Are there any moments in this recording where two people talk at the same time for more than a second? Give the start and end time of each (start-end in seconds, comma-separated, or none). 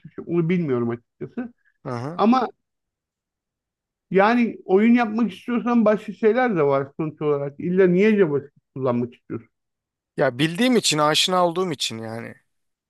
none